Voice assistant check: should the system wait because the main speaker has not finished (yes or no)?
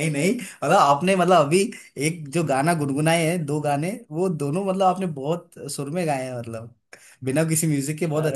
no